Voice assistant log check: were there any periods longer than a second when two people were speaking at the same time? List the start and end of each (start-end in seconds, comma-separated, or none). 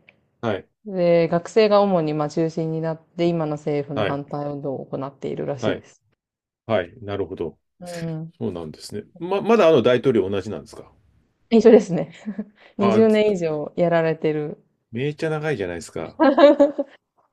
none